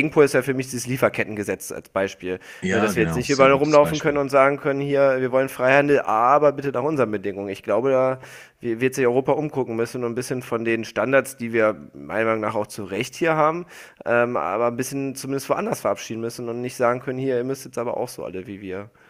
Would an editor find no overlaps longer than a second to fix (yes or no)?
no